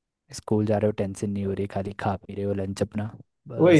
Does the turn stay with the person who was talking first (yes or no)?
no